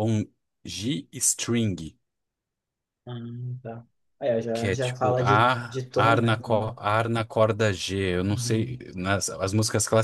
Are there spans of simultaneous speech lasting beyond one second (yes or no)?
yes